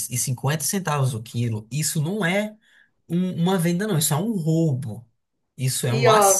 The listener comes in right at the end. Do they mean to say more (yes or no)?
no